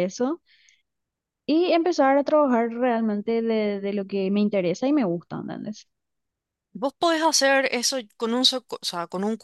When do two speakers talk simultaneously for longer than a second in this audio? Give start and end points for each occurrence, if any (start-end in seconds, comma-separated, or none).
none